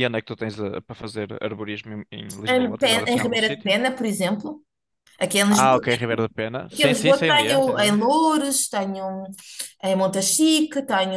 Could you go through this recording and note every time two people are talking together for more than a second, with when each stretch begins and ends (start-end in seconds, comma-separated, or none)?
2.5-3.8, 6.7-8.0